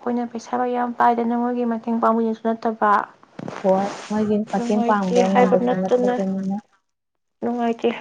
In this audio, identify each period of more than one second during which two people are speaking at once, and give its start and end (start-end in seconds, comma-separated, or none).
4.6-6.2